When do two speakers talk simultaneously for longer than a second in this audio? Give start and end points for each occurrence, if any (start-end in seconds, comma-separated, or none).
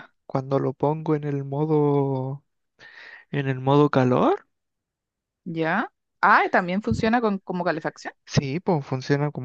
none